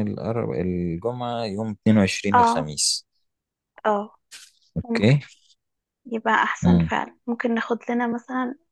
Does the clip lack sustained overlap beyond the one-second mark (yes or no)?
yes